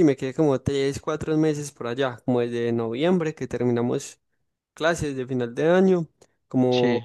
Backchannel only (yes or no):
yes